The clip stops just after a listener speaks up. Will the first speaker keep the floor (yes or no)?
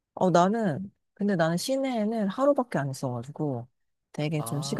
yes